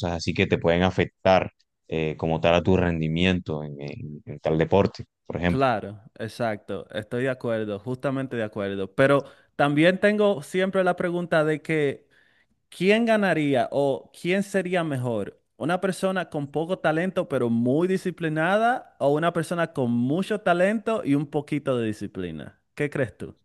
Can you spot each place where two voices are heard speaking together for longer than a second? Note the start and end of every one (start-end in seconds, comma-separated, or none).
none